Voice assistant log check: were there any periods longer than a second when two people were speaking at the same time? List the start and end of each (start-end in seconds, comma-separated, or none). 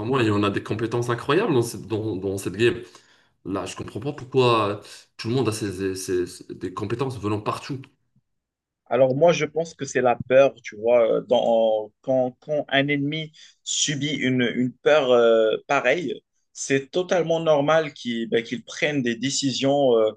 none